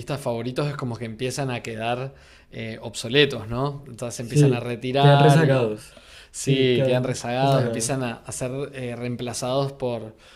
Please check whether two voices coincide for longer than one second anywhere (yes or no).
yes